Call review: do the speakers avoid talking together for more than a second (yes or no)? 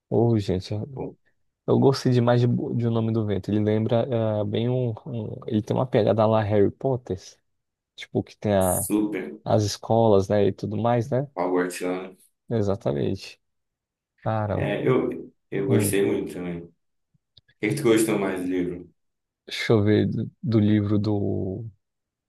yes